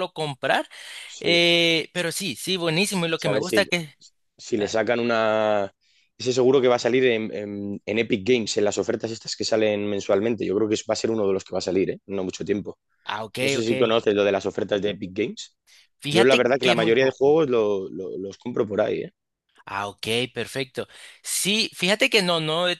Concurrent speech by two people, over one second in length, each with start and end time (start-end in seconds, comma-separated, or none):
16.1-17.4